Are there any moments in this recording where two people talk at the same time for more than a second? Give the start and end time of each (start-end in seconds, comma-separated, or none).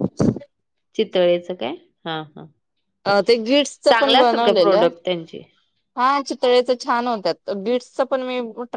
none